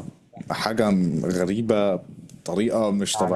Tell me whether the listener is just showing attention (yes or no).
no